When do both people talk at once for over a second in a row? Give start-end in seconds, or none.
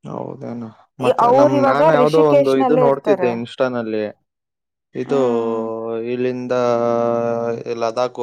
1.2-3.3